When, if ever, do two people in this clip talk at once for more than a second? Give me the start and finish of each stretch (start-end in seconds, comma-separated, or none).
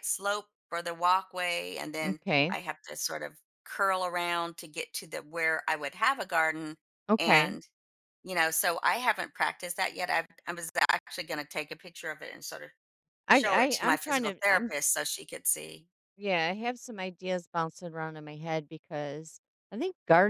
13.3-14.7